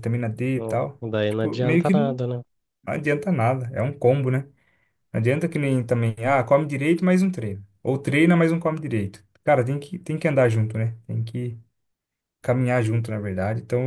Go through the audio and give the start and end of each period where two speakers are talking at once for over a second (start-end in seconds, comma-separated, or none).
0.6-2.2